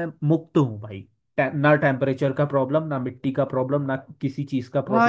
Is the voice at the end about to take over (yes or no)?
yes